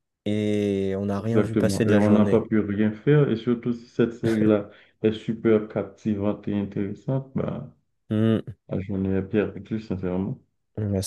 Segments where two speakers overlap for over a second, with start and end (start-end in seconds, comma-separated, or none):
1.2-2.4